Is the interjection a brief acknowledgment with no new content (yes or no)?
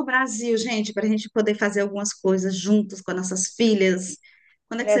no